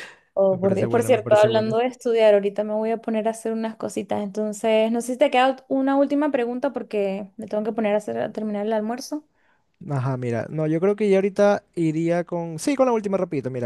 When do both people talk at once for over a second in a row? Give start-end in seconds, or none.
0.5-1.8